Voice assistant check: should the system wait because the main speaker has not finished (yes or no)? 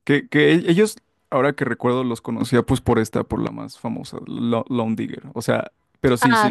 no